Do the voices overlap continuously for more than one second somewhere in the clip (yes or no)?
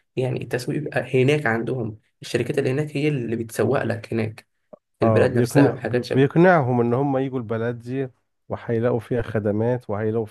yes